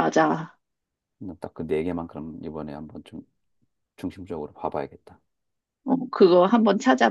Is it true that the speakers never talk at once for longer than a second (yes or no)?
yes